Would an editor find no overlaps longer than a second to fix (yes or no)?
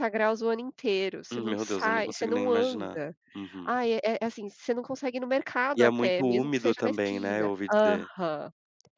no